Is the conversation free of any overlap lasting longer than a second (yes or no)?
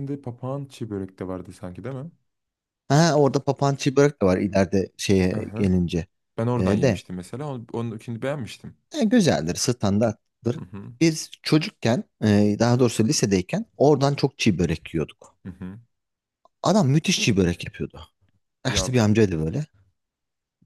yes